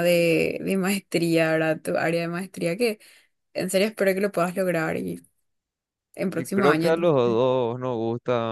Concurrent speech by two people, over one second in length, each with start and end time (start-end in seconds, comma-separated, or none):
none